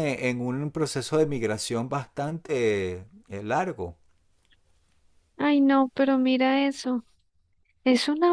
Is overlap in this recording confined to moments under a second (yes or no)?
yes